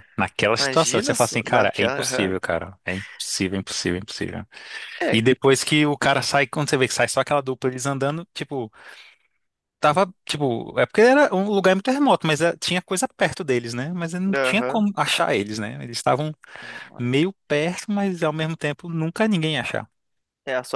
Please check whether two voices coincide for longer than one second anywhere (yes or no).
yes